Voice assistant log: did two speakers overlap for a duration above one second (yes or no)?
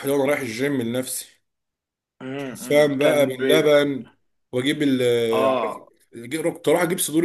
yes